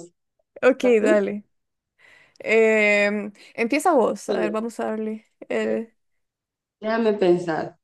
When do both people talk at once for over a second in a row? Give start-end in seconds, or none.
none